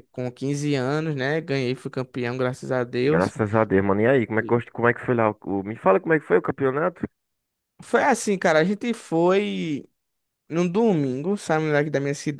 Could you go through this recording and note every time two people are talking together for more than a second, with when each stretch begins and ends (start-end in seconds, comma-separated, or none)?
none